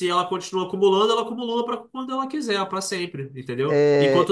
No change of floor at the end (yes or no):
no